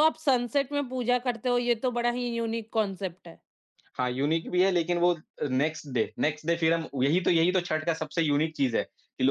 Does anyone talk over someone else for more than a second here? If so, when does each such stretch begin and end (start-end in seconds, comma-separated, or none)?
none